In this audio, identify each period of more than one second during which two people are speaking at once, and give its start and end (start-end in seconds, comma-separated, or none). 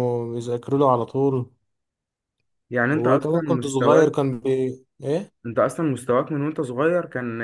2.9-4.1